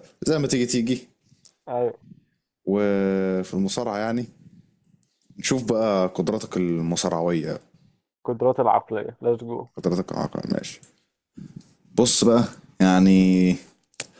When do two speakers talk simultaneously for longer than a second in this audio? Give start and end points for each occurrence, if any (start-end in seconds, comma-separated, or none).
none